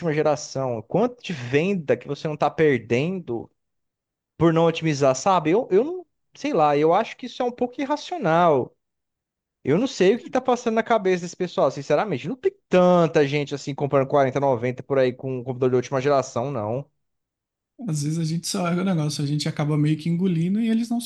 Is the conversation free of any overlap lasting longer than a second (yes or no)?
yes